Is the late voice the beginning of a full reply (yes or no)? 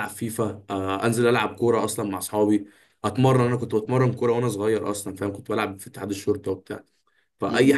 no